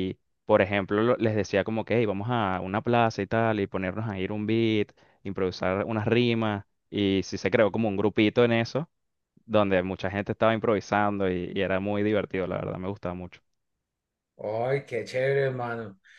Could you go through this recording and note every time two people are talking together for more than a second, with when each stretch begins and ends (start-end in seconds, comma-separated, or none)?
none